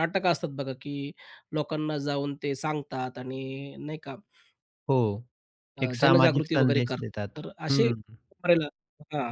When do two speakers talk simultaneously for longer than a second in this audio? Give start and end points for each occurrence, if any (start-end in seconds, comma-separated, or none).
5.8-7.9